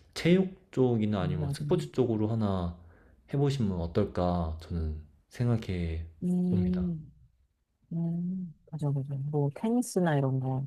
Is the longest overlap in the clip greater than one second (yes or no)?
no